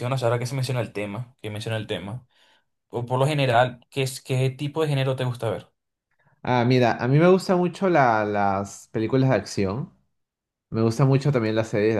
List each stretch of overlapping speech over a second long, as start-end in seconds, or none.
none